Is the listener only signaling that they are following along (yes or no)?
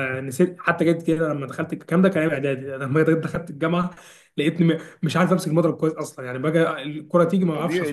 no